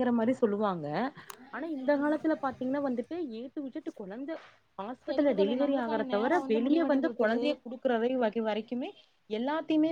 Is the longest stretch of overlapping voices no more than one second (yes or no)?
no